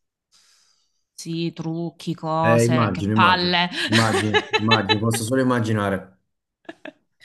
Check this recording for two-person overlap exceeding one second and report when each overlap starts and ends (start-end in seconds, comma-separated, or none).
2.4-3.7